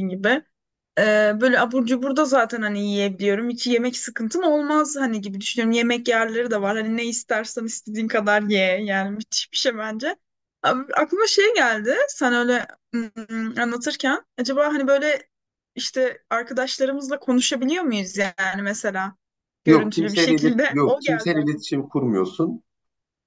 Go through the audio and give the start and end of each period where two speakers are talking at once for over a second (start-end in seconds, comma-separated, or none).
19.6-21.7